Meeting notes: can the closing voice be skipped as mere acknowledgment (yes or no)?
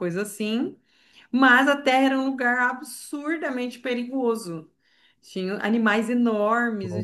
yes